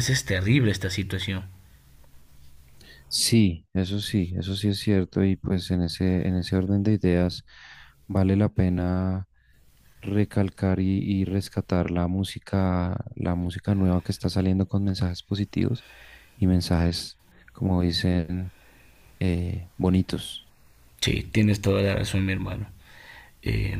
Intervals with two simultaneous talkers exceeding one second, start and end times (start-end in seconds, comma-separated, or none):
none